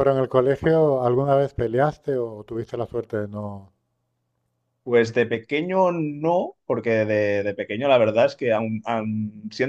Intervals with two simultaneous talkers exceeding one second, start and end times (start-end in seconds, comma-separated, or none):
none